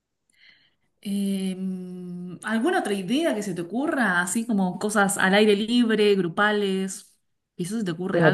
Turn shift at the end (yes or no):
yes